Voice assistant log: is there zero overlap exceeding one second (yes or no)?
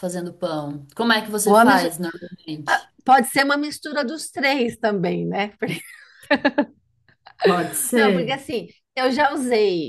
yes